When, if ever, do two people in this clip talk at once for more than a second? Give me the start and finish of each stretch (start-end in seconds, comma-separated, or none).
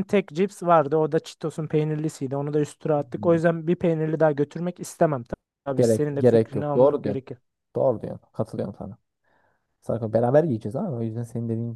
5.8-7.2